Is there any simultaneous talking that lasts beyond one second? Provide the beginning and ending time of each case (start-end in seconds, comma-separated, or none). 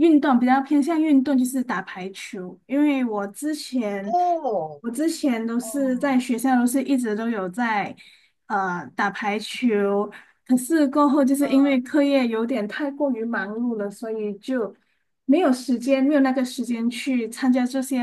none